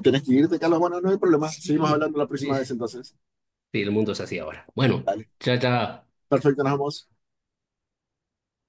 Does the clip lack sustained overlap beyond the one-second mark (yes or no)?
no